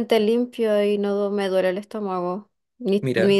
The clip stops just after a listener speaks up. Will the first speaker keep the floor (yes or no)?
yes